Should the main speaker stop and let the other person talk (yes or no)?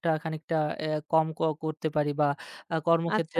no